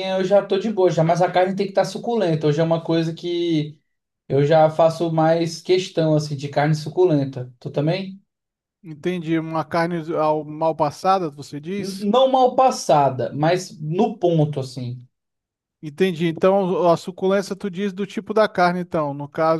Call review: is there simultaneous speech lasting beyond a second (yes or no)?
no